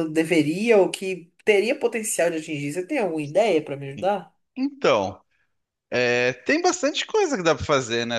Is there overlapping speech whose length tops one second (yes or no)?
no